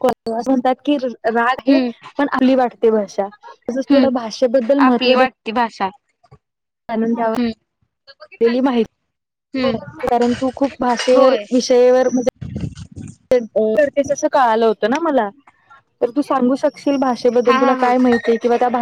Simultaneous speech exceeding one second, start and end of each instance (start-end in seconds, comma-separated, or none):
none